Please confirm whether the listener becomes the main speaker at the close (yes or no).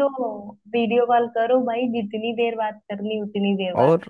yes